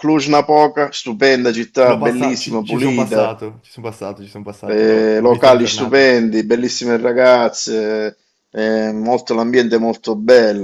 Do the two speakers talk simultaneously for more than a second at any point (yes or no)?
yes